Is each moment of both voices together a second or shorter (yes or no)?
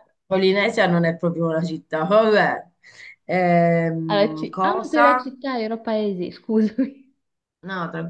no